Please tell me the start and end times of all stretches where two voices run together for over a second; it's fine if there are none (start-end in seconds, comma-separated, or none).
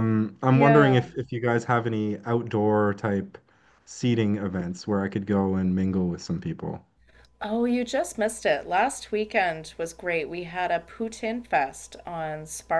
none